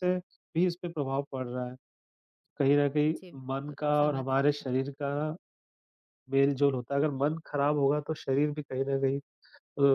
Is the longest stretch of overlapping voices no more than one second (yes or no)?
no